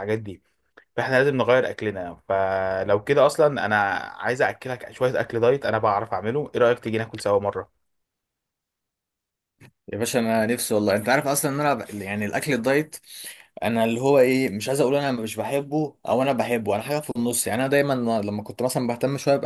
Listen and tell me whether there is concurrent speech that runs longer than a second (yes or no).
no